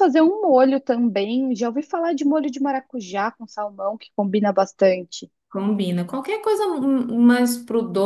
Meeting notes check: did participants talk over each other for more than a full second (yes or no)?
no